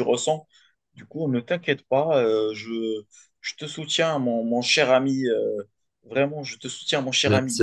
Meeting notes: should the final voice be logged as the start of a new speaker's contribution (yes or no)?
yes